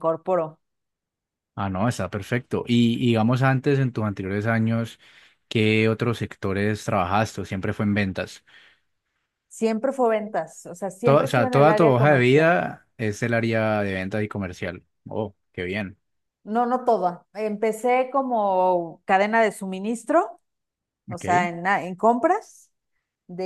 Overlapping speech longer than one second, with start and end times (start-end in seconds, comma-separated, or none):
11.0-12.5